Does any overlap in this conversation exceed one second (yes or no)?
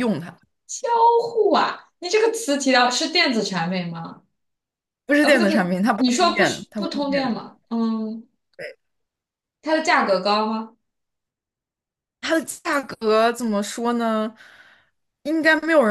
yes